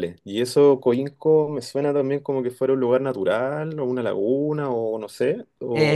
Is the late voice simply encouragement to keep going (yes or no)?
no